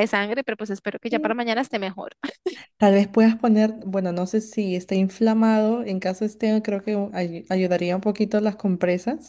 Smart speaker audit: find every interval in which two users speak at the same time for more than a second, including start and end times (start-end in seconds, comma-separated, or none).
none